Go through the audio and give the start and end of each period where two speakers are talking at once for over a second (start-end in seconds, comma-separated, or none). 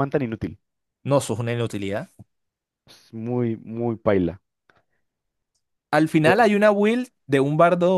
none